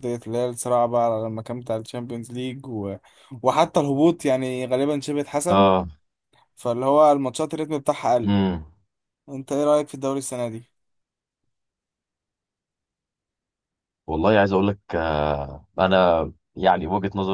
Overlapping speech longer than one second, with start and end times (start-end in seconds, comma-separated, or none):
none